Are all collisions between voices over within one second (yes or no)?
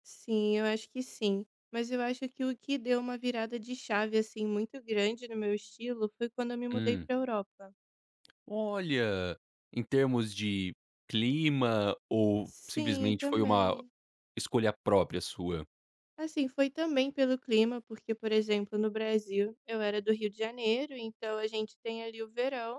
no